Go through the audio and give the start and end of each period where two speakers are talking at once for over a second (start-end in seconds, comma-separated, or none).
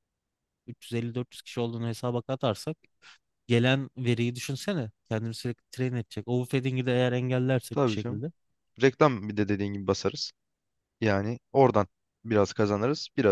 none